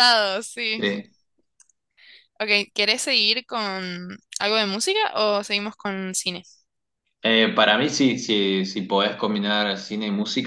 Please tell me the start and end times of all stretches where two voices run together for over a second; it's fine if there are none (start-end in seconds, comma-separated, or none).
none